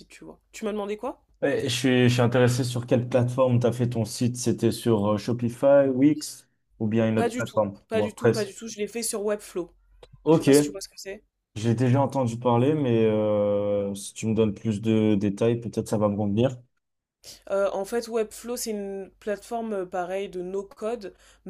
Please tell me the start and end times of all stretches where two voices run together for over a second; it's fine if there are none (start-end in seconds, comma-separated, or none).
7.2-8.5